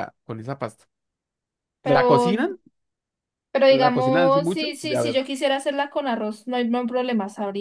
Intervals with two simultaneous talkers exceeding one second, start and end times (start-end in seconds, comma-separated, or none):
3.7-5.2